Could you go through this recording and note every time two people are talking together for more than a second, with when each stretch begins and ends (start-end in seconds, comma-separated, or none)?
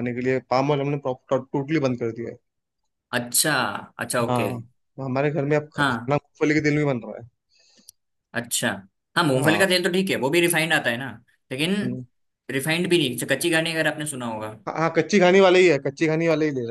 none